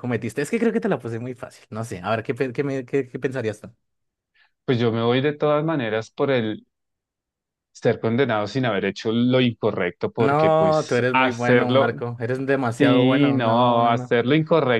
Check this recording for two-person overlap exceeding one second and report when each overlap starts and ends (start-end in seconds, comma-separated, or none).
10.2-11.9, 12.8-14.2